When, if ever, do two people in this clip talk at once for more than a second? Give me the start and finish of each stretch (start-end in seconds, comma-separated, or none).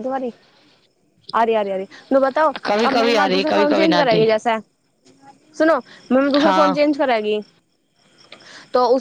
2.6-4.2